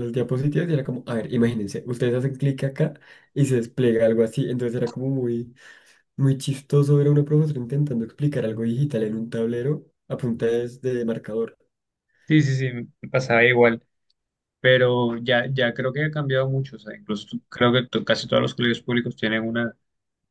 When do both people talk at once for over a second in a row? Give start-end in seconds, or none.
none